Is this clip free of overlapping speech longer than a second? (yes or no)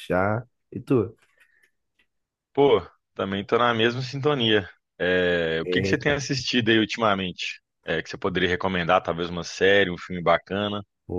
yes